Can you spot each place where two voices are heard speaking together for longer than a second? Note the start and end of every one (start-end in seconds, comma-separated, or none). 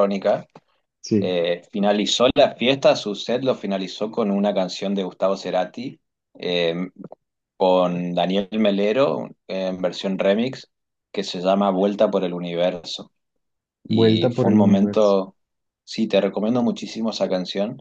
13.9-15.2